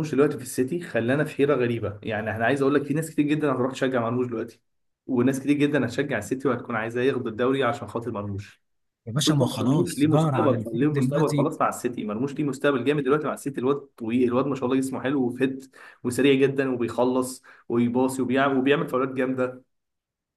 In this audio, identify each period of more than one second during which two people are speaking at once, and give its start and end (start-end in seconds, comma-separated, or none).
9.2-11.5